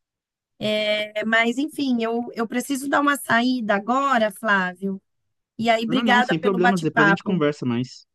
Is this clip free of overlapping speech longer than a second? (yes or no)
no